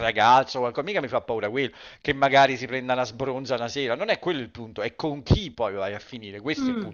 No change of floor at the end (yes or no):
no